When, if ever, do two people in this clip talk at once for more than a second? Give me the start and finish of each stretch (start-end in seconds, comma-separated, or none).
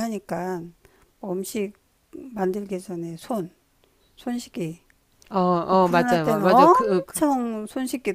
5.7-7.2